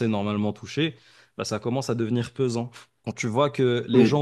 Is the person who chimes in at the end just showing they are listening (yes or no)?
yes